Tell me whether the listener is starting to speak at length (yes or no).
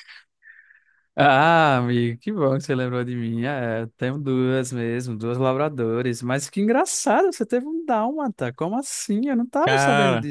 no